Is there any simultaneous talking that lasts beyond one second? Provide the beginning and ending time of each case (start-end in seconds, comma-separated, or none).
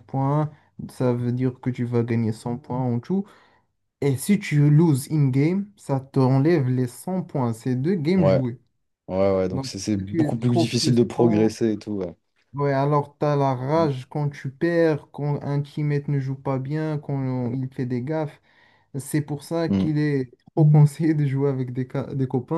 9.5-11.6